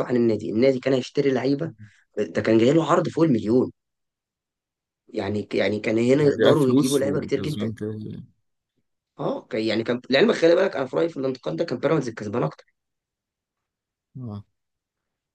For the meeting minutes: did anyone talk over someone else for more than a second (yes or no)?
yes